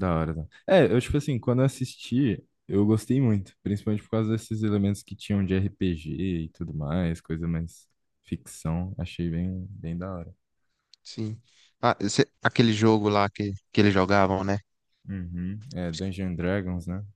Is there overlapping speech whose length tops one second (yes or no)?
no